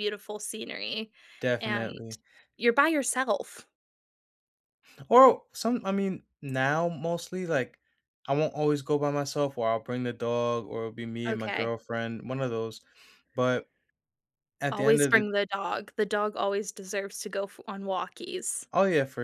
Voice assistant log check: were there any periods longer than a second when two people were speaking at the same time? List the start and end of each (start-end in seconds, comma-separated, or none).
none